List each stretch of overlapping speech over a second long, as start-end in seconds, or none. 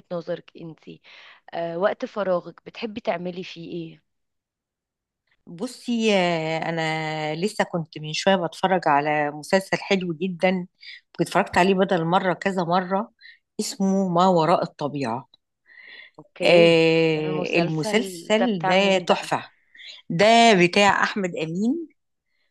16.4-19.3